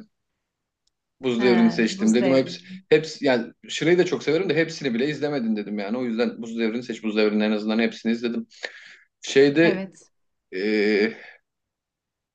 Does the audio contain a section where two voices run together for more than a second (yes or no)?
yes